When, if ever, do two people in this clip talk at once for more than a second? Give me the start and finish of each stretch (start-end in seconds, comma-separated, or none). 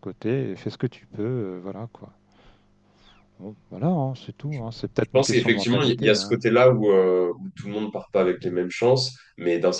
5.0-6.4